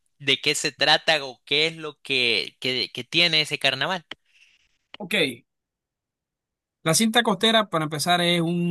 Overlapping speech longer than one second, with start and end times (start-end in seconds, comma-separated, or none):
none